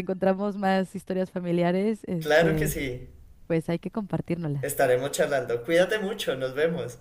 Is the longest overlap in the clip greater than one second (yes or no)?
no